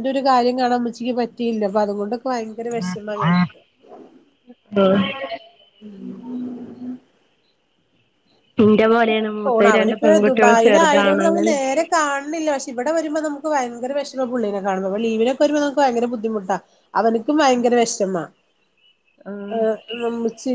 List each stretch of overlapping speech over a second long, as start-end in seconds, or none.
9.4-11.6